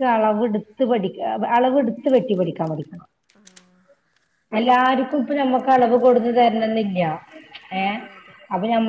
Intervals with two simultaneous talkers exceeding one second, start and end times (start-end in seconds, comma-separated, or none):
4.6-6.3